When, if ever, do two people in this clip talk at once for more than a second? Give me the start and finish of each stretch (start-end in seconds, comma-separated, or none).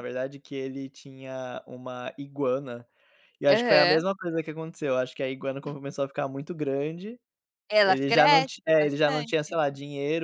7.8-9.6